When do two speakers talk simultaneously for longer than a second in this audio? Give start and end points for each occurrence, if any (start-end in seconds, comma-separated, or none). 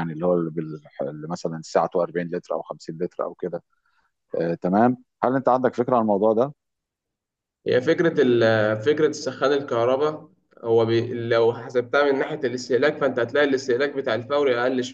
none